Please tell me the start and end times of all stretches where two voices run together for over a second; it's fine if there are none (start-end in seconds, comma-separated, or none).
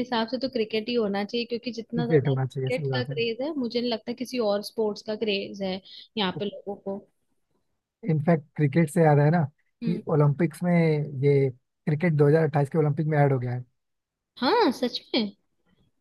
1.9-3.1